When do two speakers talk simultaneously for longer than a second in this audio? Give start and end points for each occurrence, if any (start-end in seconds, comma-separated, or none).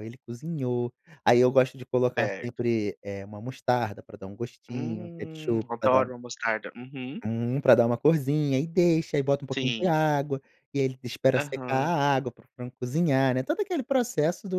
4.7-6.1